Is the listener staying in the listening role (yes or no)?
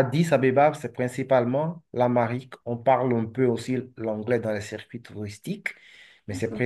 yes